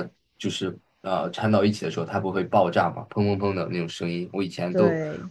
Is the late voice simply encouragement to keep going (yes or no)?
yes